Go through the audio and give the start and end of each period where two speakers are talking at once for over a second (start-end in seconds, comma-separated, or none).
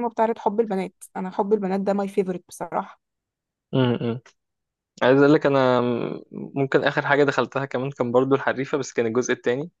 none